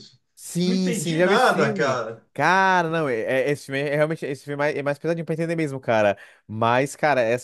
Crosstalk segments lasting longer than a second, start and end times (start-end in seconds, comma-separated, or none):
0.6-2.2